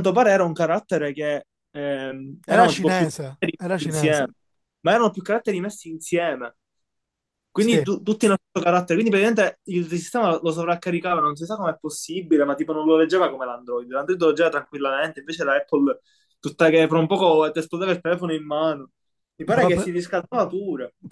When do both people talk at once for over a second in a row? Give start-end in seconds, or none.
2.5-4.2